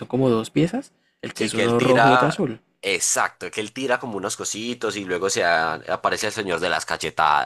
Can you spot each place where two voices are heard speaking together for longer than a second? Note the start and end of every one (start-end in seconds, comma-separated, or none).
1.3-2.6